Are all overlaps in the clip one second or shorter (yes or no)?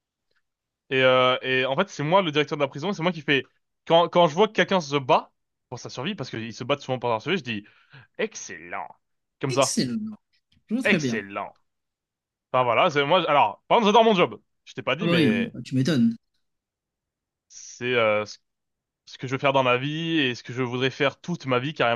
yes